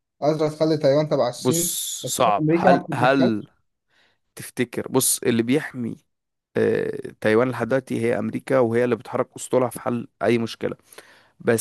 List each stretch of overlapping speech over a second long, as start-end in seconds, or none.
1.3-3.4